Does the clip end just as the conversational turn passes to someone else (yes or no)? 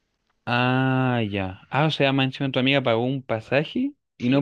yes